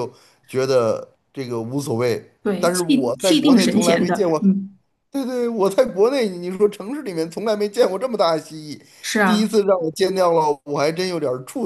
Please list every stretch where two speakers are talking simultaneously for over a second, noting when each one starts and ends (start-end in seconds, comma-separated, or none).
2.4-4.4